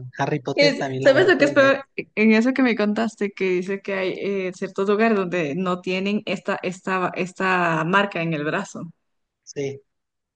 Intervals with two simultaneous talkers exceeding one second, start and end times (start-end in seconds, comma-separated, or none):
0.6-1.9